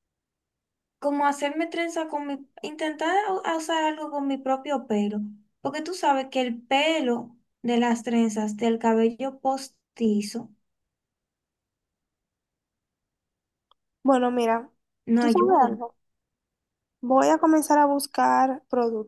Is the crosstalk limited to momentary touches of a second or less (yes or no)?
yes